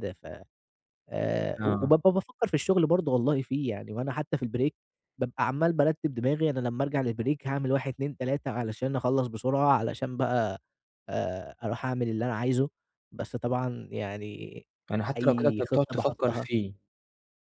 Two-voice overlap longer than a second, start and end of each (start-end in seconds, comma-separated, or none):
15.2-16.5